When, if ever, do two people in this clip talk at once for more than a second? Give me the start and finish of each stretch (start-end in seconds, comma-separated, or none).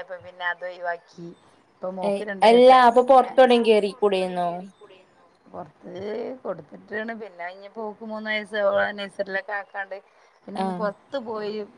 2.1-4.5